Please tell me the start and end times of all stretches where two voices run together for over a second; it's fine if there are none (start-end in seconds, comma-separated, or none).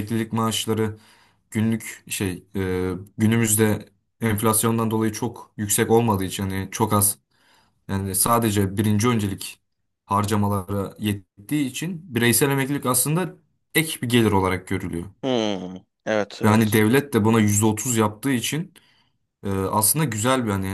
none